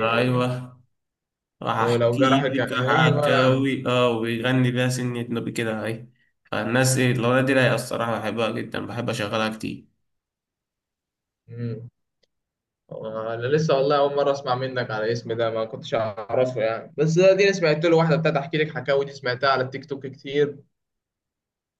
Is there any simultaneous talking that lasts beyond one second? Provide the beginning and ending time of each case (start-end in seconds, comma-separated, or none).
1.8-3.5